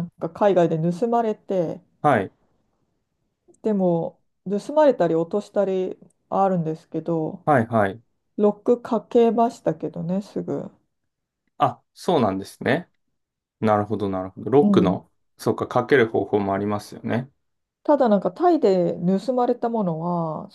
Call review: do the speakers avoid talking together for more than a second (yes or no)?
yes